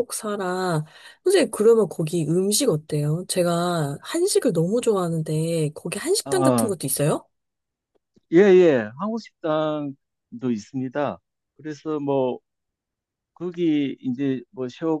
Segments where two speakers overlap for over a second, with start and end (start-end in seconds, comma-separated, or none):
none